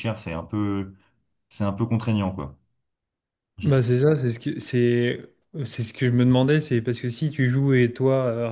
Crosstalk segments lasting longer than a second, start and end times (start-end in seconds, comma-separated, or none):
none